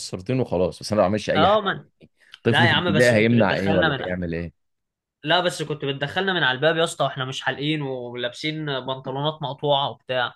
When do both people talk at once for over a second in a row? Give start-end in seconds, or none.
2.5-4.0